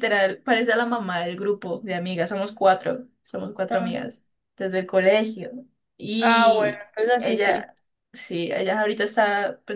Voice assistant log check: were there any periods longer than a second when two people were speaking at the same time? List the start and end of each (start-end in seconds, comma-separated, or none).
6.2-7.7